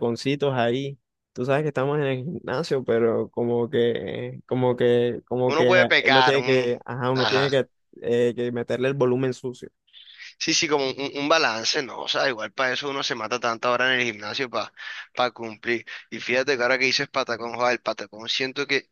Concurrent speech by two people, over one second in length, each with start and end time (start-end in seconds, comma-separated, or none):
5.5-7.6